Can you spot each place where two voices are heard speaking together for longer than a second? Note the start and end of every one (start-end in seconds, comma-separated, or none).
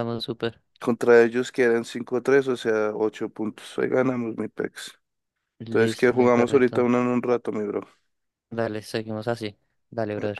5.6-6.9